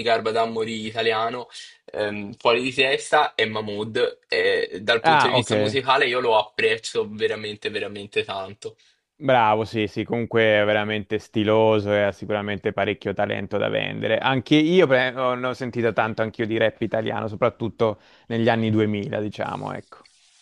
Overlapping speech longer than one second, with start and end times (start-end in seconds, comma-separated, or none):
none